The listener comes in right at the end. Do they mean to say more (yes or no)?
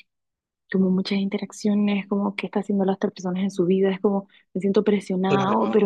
no